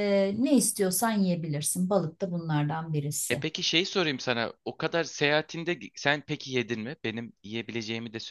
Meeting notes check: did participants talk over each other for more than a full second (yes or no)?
no